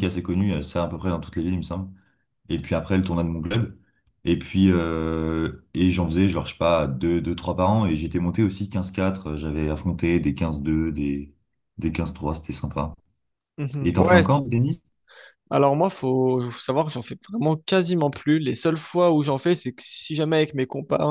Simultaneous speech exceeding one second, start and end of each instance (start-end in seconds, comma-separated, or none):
none